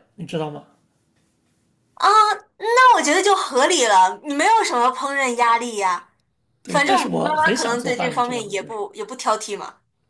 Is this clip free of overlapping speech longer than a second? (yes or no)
no